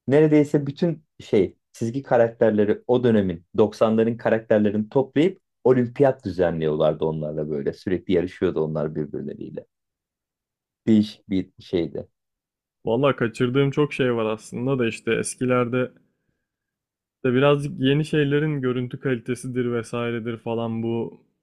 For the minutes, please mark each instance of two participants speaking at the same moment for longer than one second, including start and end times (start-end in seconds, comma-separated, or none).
none